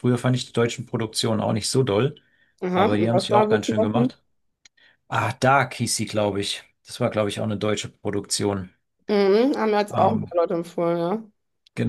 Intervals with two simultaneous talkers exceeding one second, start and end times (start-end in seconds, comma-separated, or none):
2.7-4.1